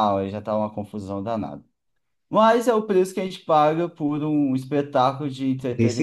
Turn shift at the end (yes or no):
no